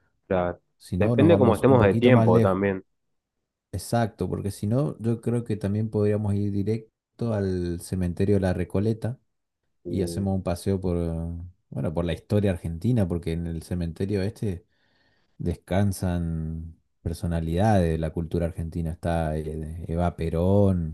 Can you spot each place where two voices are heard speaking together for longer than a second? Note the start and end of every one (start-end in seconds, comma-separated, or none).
1.0-2.6